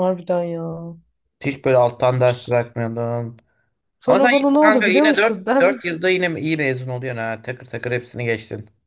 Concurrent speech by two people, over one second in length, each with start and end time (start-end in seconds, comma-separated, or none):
4.1-5.8